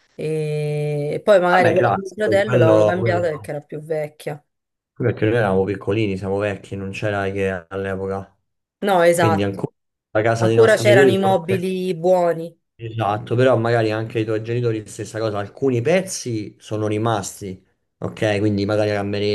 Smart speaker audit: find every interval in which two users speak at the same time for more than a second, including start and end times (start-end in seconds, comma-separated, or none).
1.5-3.5, 10.4-11.6